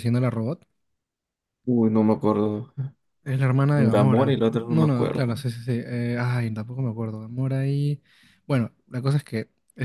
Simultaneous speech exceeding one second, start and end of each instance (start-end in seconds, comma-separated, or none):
3.7-5.4